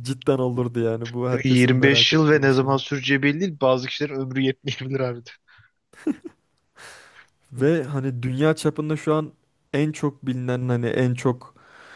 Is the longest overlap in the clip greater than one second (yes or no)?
yes